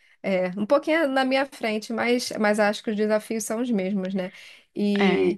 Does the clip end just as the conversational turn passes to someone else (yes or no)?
no